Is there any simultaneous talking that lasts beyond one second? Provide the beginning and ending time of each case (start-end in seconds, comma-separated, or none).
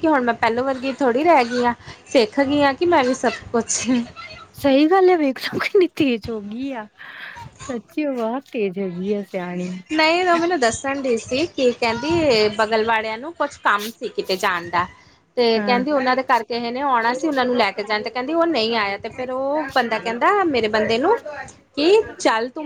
none